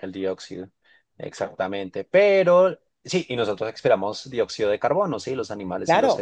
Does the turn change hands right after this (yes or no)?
yes